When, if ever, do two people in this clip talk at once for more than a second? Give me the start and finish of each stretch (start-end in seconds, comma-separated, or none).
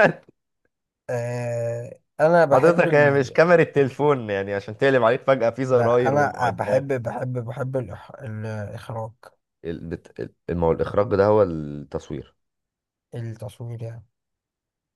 5.7-7.0